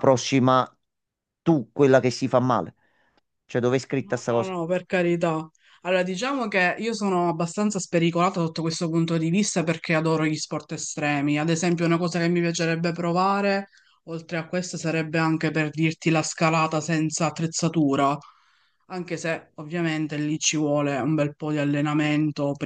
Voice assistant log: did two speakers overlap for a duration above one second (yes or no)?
no